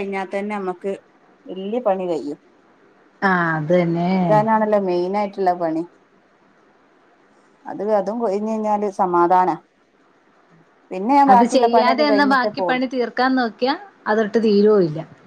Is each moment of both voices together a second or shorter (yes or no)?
no